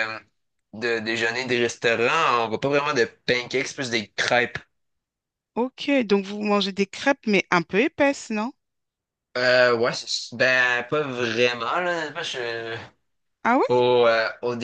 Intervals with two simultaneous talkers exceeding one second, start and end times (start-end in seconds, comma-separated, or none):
none